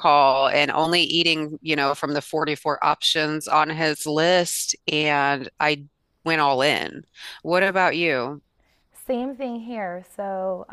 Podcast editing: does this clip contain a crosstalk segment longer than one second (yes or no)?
no